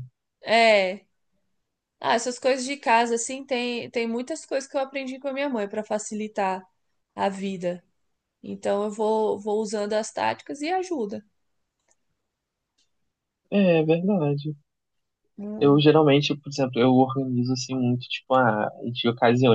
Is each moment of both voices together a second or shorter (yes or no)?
yes